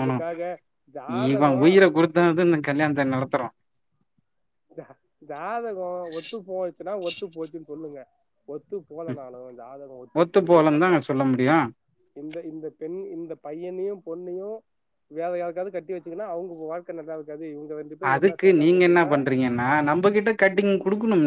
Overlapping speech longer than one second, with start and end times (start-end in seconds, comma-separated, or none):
none